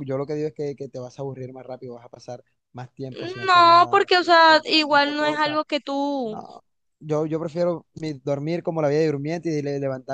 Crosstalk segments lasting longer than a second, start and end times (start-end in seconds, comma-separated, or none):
3.5-5.6